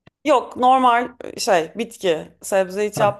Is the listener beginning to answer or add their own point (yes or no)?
no